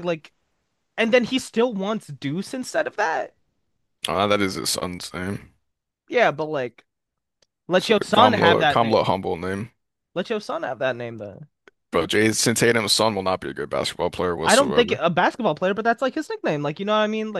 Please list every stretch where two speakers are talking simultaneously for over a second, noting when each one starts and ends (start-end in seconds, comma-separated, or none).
7.8-9.1